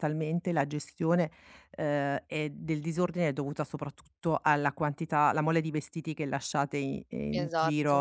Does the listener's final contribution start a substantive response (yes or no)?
no